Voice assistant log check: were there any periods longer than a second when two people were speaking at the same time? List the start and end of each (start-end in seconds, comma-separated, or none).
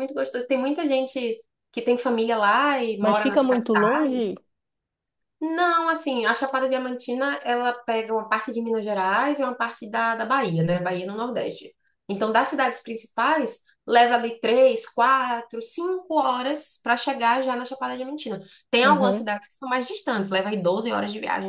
3.0-4.3